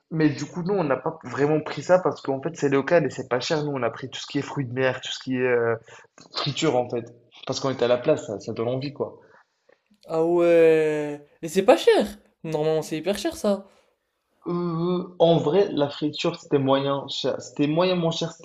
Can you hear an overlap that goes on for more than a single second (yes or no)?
no